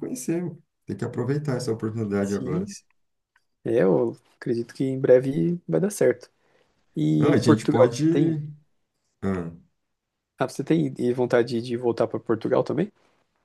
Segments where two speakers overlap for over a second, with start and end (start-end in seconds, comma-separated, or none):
7.2-8.4